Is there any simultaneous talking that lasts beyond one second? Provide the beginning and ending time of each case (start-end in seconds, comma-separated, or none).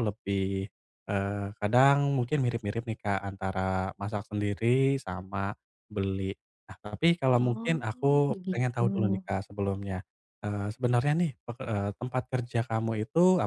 7.3-8.9